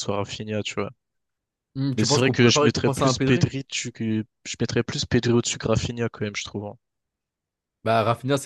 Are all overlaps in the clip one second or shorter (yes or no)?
no